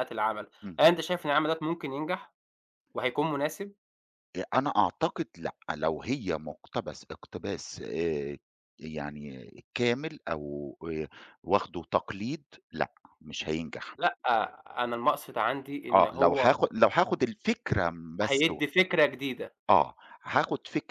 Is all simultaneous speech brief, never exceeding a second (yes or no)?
yes